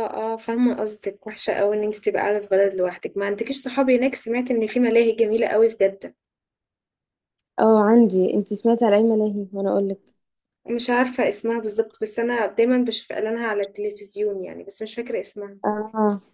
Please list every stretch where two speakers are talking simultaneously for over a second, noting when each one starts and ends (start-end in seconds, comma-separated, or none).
none